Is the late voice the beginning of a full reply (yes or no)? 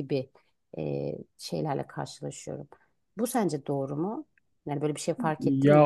yes